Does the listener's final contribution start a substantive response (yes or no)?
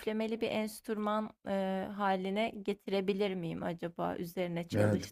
yes